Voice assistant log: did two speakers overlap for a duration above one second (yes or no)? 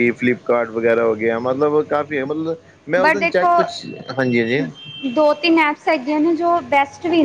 no